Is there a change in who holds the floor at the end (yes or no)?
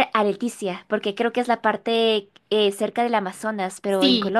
yes